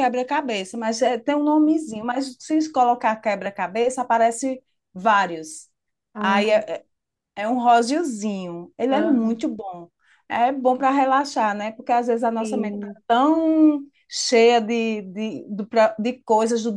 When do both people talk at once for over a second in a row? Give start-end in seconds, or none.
none